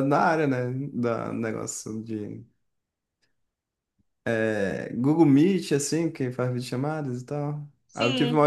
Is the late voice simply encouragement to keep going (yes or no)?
yes